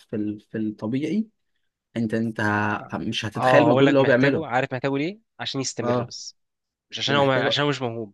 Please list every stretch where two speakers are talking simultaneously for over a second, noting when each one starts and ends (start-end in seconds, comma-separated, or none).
3.4-4.6